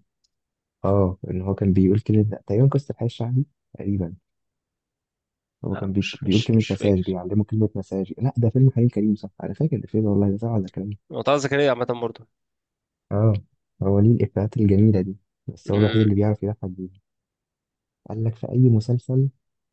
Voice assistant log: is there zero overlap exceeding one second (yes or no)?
no